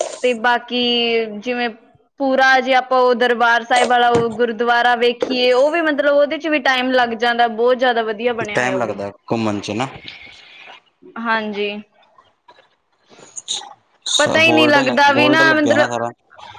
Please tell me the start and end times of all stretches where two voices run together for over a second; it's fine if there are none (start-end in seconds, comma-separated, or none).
14.2-16.0